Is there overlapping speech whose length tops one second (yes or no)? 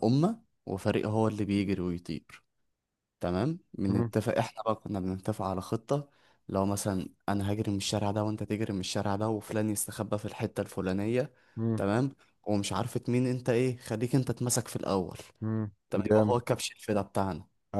no